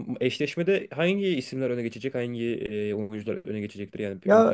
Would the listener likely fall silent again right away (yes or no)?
no